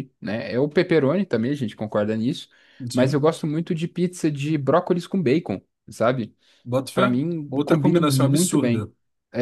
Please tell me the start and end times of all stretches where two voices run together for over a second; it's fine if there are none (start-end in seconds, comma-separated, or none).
6.9-8.9